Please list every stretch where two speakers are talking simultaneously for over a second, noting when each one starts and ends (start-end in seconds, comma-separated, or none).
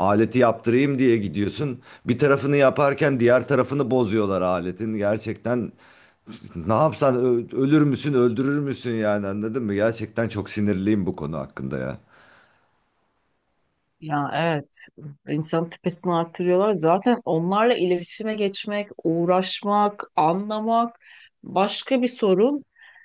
none